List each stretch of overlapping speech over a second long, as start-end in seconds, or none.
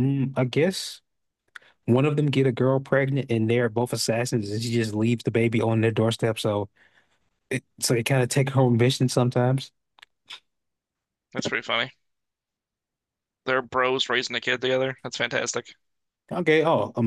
none